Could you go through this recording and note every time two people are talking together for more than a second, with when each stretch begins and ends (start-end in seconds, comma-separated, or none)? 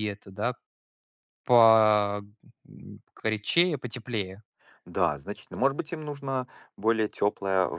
none